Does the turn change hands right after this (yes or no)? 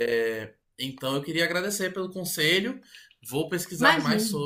no